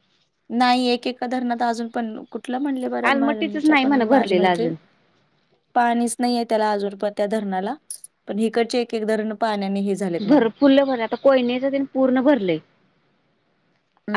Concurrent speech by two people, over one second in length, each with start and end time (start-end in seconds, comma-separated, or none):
3.1-4.7